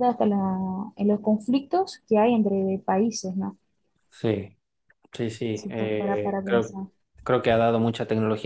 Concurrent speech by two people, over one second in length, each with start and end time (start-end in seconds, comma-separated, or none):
5.5-6.8